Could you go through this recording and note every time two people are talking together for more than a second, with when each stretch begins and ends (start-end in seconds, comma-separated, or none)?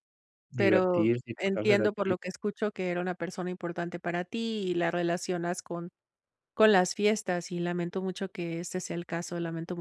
0.6-2.1